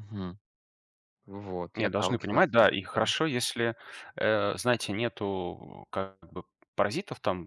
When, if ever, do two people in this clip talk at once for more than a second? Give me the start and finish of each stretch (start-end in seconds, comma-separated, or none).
1.7-3.1